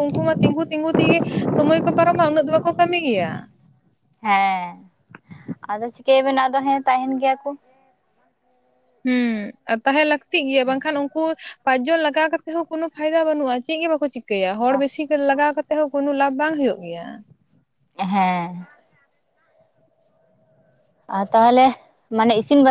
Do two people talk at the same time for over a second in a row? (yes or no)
no